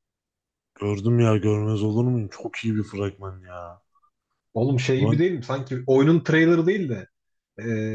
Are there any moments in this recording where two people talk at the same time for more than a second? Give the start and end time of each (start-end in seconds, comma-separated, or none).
none